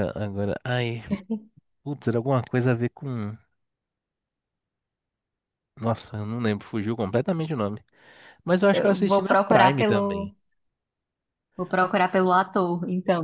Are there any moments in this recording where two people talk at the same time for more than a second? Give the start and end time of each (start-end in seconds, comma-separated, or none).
8.7-10.3